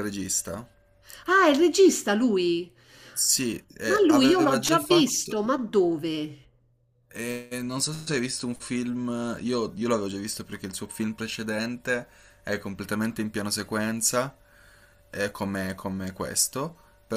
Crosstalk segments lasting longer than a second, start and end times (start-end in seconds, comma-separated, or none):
3.9-5.5